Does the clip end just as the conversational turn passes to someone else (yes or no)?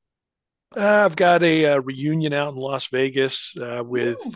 no